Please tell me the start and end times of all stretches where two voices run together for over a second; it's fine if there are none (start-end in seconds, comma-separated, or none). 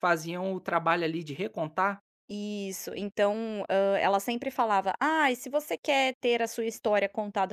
none